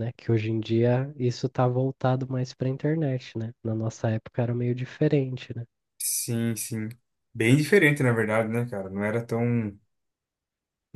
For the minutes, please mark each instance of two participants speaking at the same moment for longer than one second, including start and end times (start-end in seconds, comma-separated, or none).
none